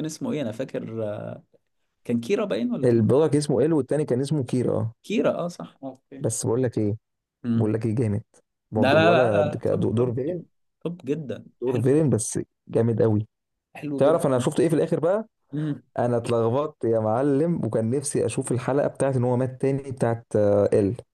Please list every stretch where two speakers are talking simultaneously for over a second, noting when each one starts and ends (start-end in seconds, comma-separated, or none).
8.8-10.1